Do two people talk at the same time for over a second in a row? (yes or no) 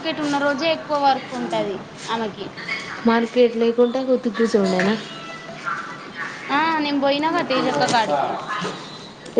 no